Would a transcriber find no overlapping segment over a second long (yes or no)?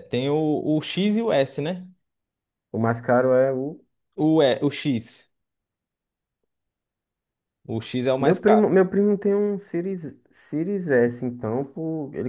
yes